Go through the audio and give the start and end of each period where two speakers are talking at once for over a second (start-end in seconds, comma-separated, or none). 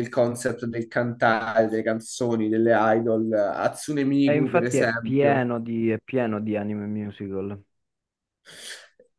4.2-5.5